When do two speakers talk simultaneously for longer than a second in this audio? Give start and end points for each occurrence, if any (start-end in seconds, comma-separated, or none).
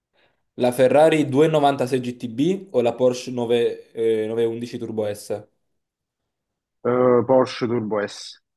none